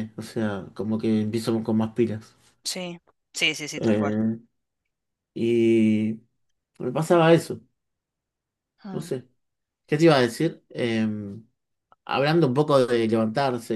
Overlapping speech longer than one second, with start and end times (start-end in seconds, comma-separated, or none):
none